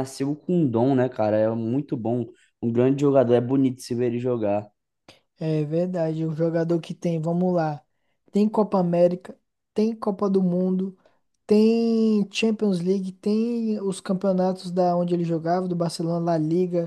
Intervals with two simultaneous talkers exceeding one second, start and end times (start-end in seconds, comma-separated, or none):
none